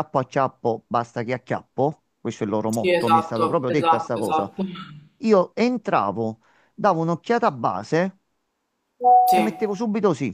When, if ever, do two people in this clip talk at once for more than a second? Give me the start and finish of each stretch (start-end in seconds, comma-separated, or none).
2.7-4.5